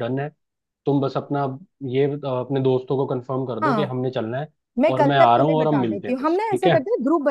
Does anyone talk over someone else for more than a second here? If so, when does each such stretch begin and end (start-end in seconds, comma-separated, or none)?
4.9-6.8